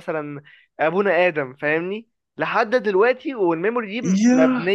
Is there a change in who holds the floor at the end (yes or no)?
no